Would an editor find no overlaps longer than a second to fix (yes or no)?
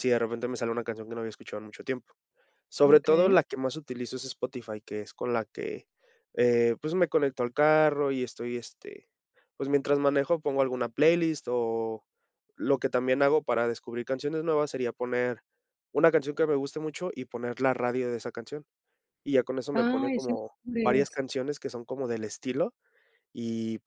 no